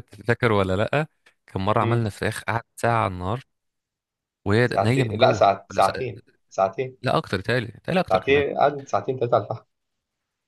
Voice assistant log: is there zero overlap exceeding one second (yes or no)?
no